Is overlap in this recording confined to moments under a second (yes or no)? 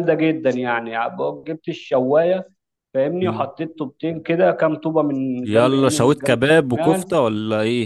no